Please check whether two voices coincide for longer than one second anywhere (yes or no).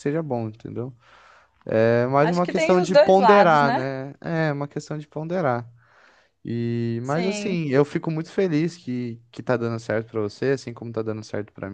yes